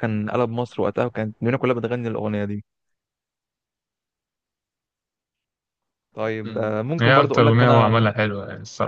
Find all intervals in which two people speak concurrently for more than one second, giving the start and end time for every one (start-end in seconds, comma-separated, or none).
6.4-8.1